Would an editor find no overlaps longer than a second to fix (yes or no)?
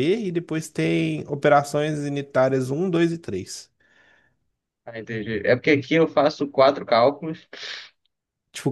yes